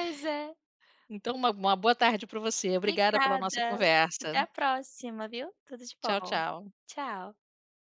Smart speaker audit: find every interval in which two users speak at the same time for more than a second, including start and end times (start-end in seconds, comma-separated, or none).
2.8-4.4